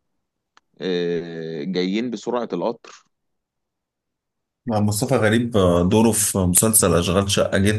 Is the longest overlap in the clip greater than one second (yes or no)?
no